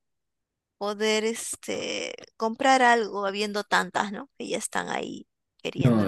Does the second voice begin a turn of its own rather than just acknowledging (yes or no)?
yes